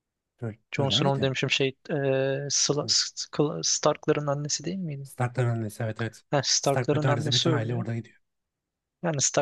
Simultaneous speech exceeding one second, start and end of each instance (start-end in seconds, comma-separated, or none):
6.6-7.9